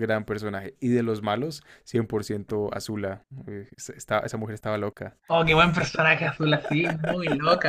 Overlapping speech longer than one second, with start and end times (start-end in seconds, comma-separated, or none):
none